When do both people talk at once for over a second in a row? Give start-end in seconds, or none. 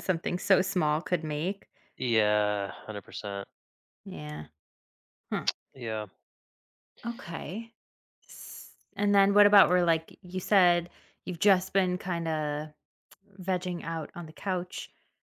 none